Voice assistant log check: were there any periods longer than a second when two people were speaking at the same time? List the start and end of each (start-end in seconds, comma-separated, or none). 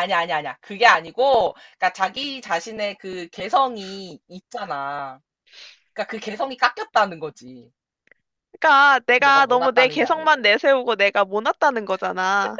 9.2-10.4